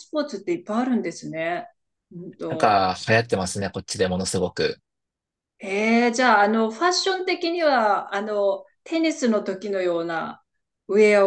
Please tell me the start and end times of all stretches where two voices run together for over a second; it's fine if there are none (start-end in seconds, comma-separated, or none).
none